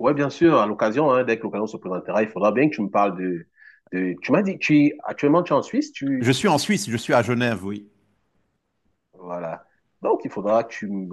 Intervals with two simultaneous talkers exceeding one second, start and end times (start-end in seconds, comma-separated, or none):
none